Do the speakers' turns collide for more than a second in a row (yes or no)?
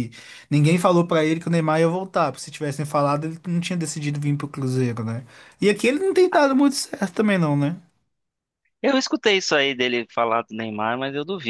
no